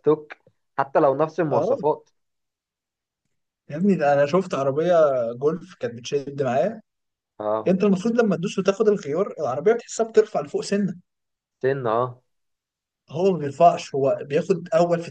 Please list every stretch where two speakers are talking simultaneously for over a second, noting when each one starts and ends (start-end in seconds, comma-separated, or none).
none